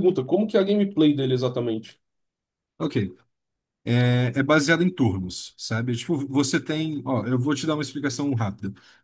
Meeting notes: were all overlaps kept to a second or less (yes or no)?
yes